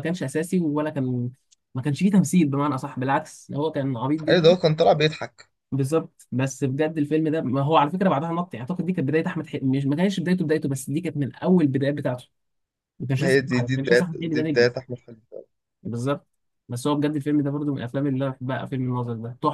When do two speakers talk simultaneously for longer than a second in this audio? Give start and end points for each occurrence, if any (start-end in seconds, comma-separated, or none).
13.2-14.7